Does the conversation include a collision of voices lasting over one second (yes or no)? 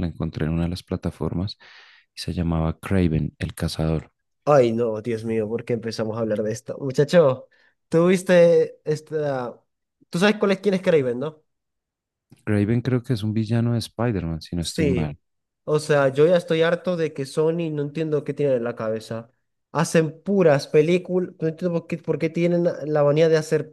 no